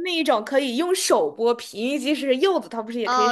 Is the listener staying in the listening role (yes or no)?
no